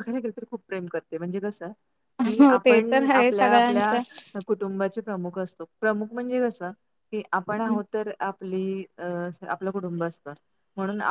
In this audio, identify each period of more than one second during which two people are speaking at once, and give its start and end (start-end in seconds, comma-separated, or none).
2.4-4.0